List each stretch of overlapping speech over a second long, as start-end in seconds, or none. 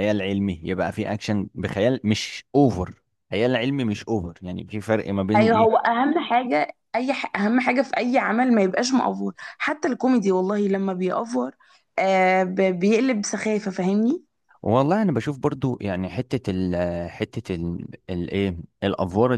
none